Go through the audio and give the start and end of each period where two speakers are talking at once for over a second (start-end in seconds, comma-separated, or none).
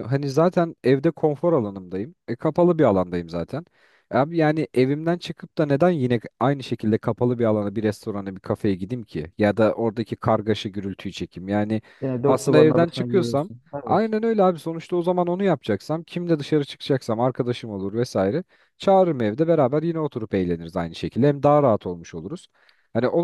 12.3-14.1